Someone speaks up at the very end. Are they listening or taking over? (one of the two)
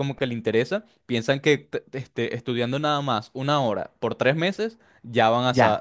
taking over